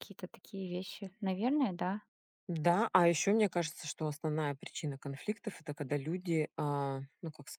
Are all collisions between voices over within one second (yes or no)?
yes